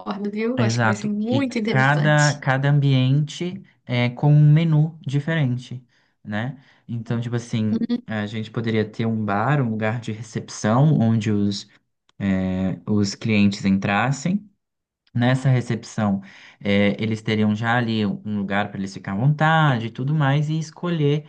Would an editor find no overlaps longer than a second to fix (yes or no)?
no